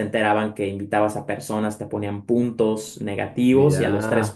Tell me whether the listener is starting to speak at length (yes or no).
no